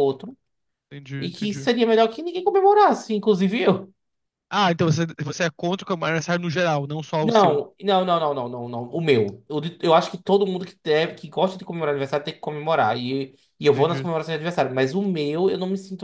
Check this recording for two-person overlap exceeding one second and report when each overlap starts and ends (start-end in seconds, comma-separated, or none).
none